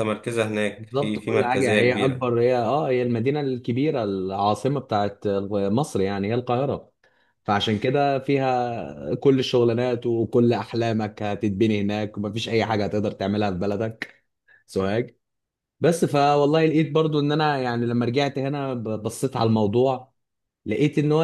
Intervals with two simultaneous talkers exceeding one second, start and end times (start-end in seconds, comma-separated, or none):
0.8-2.3